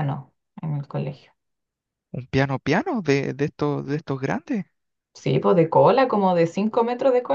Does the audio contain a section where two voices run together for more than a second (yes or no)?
no